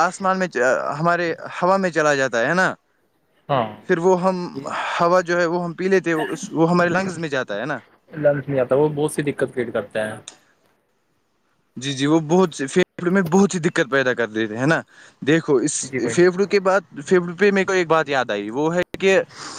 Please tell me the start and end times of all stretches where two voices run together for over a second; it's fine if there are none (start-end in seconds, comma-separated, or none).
none